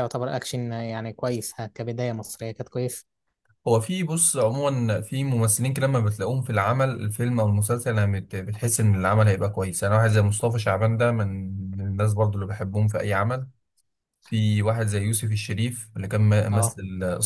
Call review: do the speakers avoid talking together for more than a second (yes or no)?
yes